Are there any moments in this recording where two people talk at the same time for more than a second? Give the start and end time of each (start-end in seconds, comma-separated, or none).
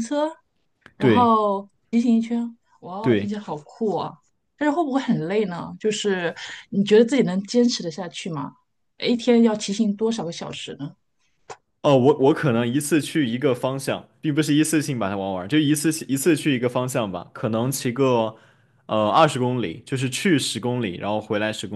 none